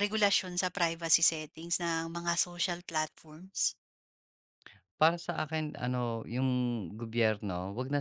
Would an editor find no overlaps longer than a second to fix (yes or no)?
yes